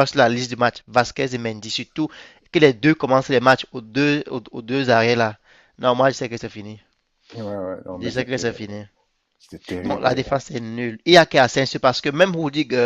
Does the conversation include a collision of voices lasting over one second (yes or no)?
no